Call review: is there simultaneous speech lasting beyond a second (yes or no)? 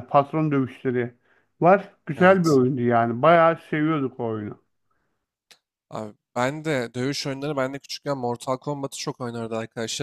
no